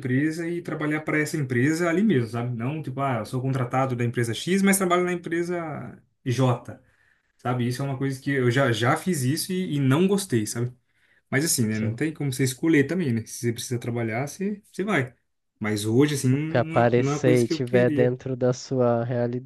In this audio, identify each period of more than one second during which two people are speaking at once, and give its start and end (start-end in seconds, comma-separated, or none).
16.5-18.1